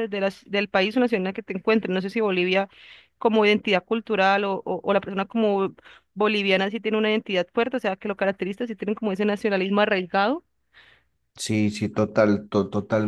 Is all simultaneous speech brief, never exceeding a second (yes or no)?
yes